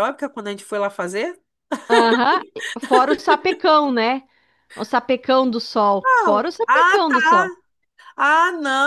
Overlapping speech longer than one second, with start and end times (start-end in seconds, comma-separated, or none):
6.0-7.5